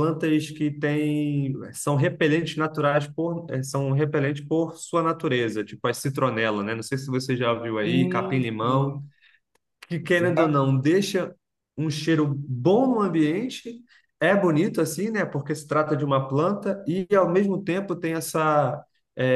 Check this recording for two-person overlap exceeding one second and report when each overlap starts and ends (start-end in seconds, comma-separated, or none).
7.8-9.0